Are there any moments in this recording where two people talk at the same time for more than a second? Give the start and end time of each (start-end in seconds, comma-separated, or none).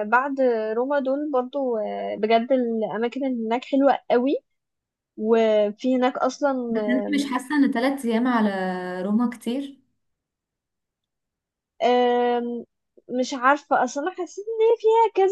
none